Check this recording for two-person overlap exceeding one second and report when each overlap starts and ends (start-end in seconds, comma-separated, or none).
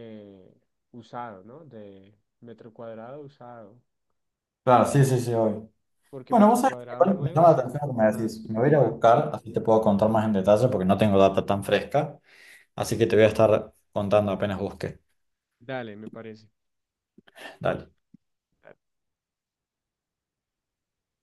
6.3-9.0